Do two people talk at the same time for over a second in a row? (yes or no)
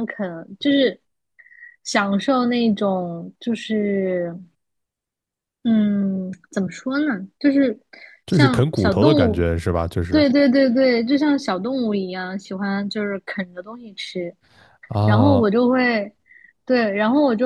yes